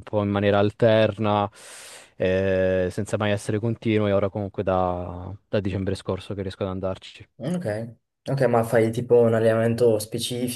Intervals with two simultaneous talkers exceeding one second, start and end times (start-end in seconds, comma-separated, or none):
none